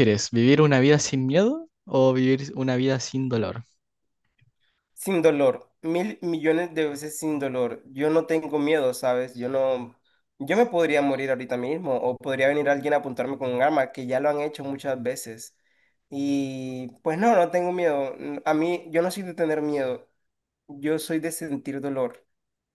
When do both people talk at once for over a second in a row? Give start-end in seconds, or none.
none